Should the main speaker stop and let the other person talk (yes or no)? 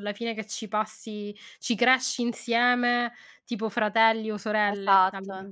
yes